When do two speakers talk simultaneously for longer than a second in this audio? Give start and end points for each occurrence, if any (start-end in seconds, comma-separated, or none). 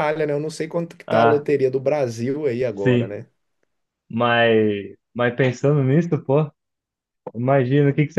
none